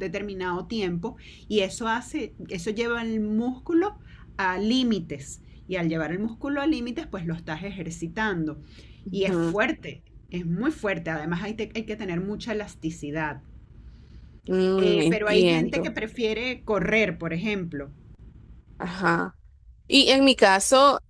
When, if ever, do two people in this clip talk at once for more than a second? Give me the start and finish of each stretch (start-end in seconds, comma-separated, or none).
14.8-16.0